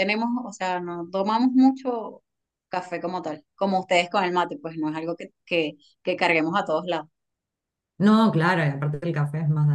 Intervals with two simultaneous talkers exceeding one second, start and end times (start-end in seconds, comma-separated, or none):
none